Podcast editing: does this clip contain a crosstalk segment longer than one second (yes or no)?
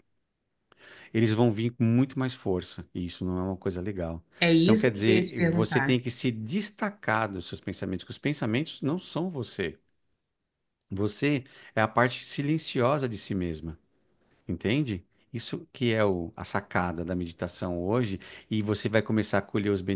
yes